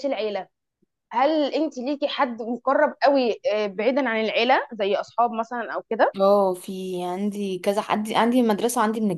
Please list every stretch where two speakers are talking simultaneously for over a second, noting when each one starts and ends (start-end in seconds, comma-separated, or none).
none